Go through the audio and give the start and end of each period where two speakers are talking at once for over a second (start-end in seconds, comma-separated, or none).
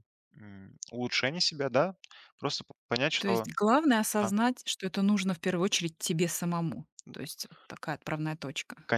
none